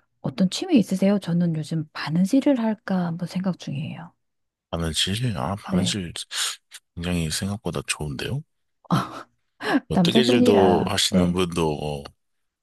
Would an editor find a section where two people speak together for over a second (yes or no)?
yes